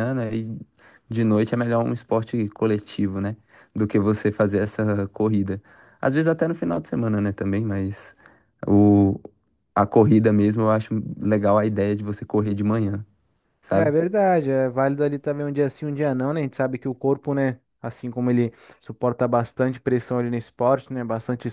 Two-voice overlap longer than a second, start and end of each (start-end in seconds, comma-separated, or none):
none